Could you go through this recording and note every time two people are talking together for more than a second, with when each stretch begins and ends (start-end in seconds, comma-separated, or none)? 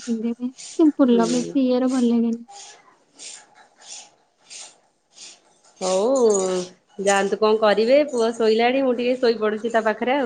none